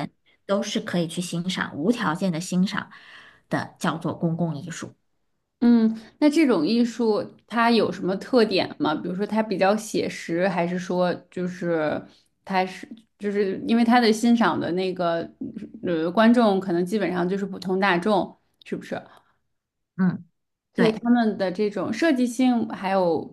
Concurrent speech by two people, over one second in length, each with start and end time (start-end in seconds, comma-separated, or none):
none